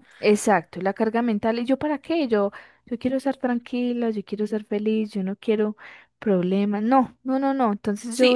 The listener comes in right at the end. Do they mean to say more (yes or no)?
yes